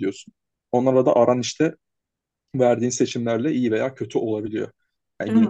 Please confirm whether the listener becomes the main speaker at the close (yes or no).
no